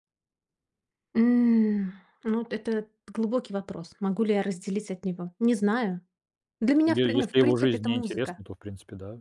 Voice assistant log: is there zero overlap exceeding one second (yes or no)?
no